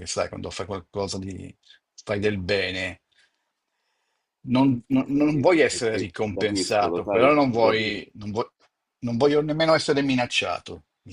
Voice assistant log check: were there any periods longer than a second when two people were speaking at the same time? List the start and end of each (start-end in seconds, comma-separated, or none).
4.9-8.0